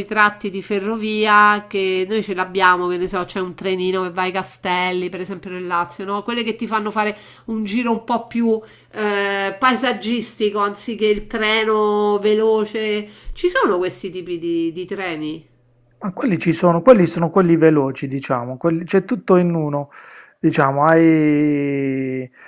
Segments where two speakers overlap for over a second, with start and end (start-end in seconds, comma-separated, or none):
none